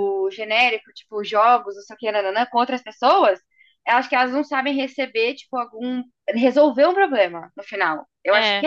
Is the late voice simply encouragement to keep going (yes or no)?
no